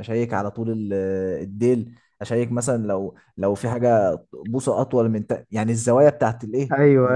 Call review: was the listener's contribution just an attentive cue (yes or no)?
no